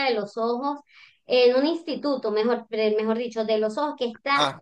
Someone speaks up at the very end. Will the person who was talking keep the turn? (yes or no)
yes